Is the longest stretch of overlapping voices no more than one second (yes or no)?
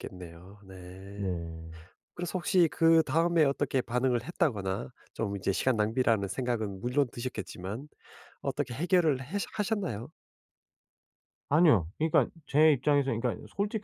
yes